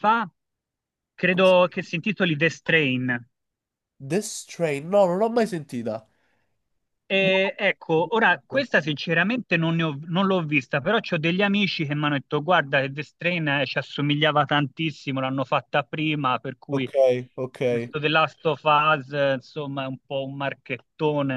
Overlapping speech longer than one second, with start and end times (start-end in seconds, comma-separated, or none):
none